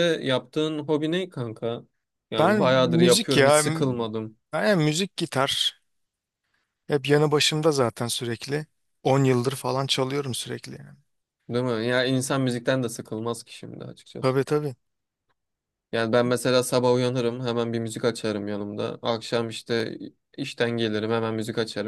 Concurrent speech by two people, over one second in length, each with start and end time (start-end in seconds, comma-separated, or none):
2.4-3.6